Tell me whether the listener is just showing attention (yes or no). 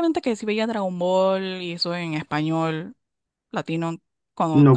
no